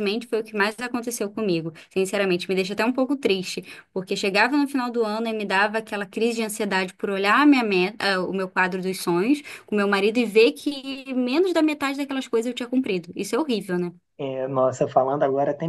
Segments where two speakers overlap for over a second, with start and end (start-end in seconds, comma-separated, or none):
none